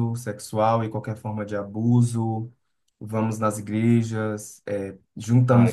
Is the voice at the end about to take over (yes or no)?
no